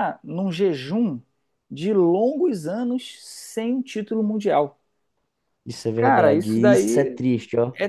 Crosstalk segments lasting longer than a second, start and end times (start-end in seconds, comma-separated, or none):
6.0-7.2